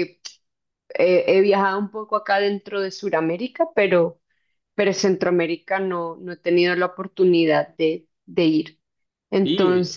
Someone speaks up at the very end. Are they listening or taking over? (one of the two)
listening